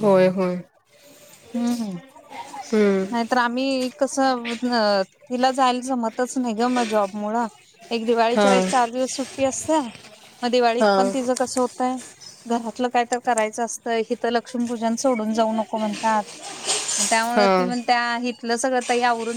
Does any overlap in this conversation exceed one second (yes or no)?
no